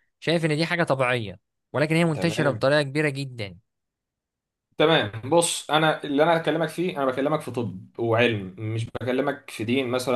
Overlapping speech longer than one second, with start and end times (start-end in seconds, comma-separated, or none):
none